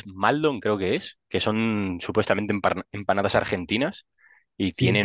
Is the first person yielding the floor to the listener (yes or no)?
no